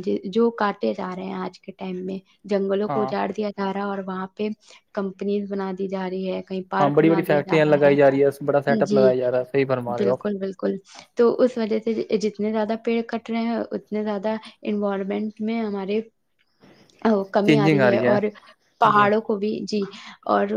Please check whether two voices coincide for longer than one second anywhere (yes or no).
yes